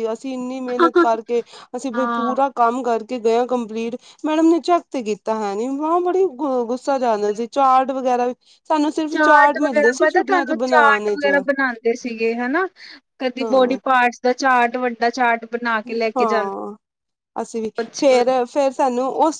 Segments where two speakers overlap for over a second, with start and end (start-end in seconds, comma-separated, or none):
9.2-11.3